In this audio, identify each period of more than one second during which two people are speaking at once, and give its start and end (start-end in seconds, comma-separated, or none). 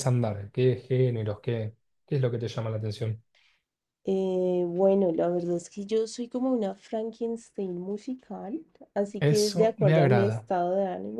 9.2-10.5